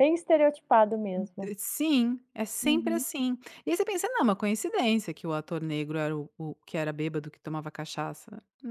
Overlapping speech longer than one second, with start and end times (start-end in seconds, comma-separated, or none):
none